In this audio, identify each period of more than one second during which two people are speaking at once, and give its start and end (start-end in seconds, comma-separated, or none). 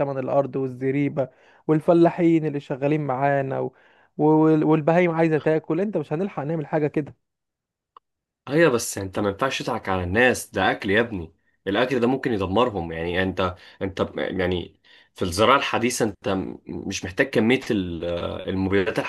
none